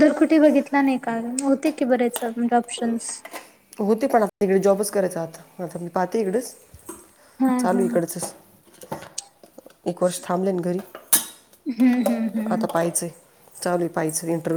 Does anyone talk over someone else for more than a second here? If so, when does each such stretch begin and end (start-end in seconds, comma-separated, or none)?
none